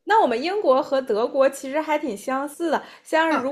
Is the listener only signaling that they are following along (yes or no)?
yes